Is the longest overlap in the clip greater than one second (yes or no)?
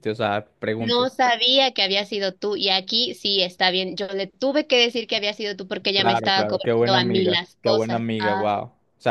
yes